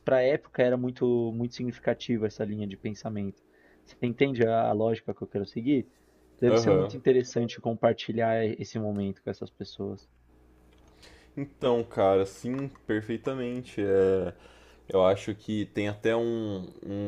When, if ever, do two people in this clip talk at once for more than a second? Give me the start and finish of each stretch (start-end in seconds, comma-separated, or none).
none